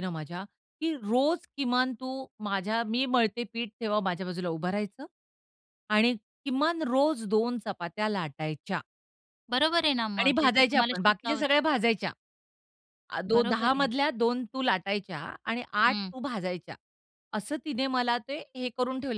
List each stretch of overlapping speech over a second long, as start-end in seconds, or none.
10.2-11.5